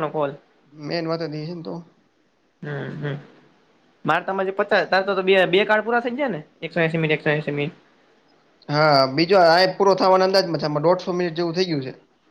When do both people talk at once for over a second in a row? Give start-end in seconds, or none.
none